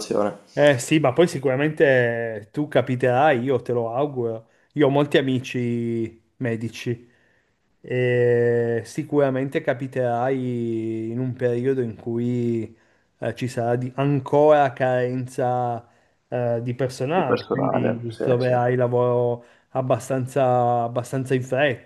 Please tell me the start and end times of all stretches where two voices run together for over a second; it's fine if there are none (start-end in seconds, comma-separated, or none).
17.1-18.5